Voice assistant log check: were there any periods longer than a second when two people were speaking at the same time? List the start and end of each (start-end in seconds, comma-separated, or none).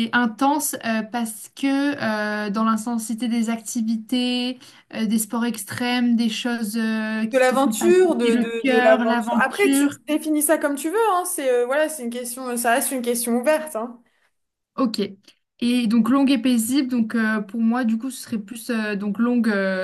7.3-10.0